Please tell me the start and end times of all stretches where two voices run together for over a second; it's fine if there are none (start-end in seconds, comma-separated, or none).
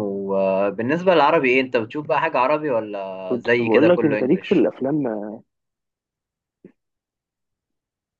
3.3-4.7